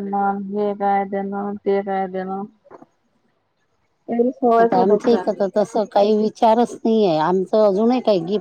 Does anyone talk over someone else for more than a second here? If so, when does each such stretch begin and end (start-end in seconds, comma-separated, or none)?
none